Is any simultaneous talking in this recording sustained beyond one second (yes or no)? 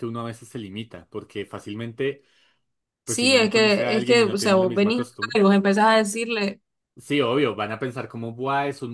yes